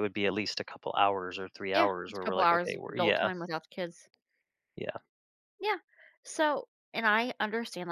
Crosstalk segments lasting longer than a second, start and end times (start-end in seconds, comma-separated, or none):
1.7-3.3